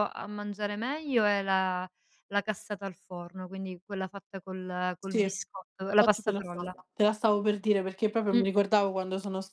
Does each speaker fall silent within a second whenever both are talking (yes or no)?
no